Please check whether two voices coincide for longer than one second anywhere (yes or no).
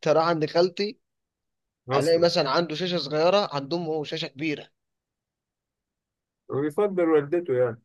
no